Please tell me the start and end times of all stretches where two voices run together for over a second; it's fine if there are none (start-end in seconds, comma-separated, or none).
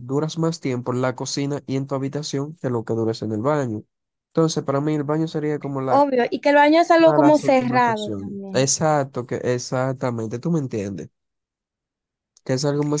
7.0-8.7